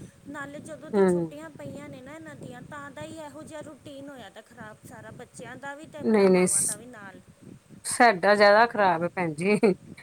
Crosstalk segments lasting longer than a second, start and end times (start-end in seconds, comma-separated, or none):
none